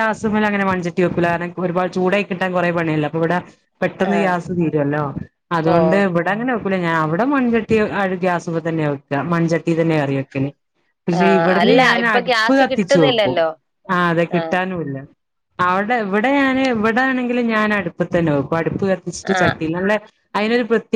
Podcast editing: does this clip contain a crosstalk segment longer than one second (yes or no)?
yes